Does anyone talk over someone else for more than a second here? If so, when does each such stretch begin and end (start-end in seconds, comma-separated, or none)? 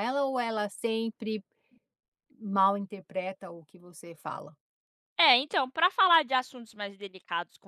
none